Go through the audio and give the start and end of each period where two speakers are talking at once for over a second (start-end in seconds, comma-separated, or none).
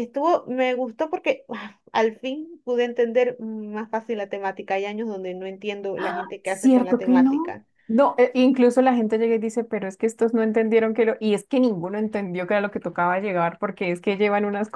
6.4-7.7